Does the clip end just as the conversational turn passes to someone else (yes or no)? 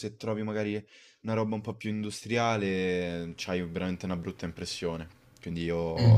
no